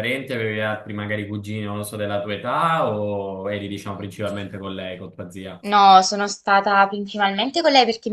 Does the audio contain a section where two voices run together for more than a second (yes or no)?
no